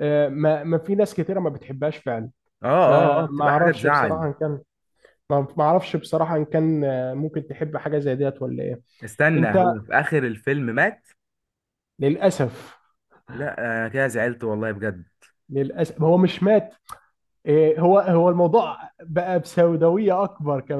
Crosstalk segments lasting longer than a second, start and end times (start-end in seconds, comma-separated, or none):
2.8-4.2